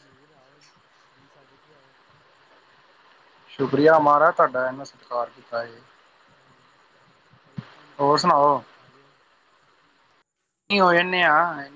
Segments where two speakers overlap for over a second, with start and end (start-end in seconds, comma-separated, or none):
none